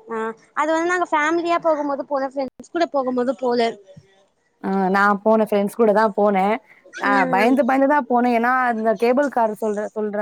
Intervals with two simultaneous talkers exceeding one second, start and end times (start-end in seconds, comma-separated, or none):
none